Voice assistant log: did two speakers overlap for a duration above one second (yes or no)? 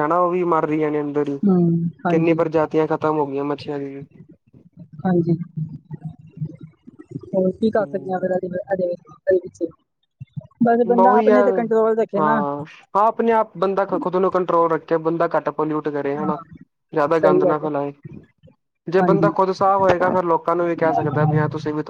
no